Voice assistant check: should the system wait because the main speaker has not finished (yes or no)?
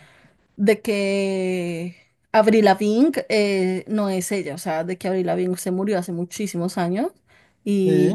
yes